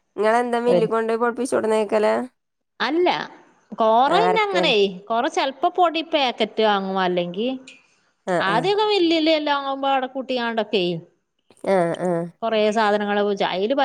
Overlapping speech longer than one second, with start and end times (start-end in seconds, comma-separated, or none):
none